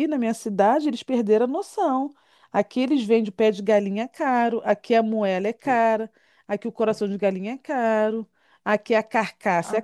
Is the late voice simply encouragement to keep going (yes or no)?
yes